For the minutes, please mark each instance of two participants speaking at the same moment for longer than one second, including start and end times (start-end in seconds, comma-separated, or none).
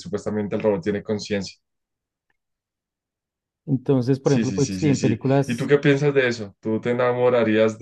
4.2-5.7